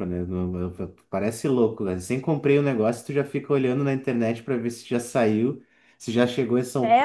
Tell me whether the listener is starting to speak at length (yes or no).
yes